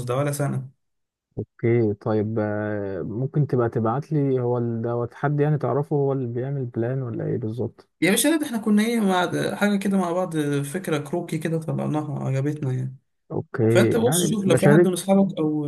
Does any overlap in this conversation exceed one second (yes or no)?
yes